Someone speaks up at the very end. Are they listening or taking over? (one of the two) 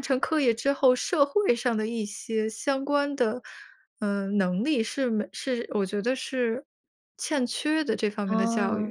taking over